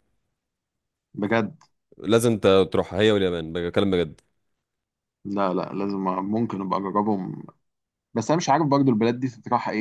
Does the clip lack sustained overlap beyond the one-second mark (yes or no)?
yes